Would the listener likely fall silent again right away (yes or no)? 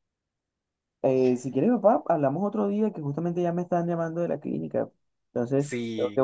no